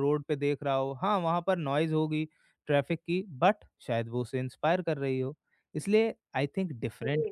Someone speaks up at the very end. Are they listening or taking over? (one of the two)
listening